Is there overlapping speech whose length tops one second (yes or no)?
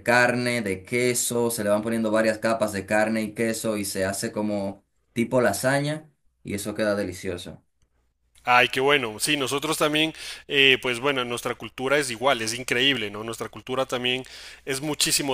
no